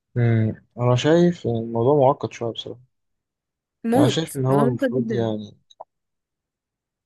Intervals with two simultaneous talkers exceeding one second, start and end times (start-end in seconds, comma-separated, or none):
4.0-5.3